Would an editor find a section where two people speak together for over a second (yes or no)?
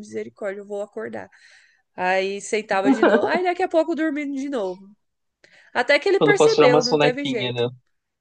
yes